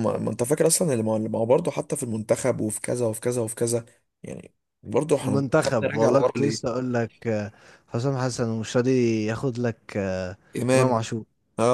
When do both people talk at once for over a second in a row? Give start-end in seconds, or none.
5.2-6.7